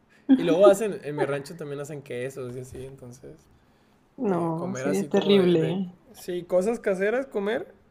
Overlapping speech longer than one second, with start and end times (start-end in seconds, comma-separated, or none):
4.3-6.0